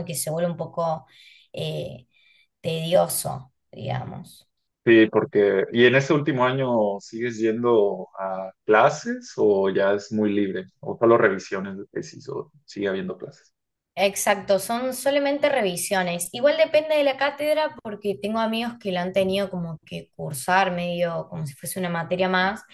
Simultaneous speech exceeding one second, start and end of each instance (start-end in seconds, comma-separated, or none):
none